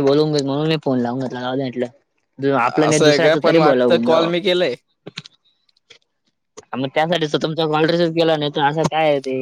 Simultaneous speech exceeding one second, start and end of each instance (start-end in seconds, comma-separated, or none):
2.7-4.3